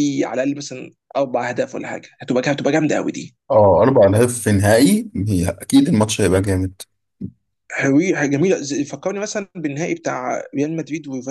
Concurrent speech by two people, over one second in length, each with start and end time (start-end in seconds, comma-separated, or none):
none